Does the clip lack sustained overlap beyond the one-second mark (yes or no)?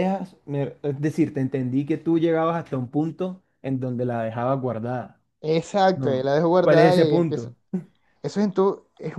no